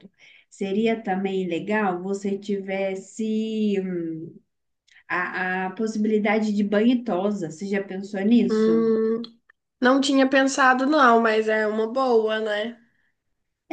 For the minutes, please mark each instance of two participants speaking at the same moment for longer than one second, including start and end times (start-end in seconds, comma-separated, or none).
none